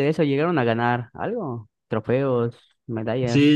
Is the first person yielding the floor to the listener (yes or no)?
yes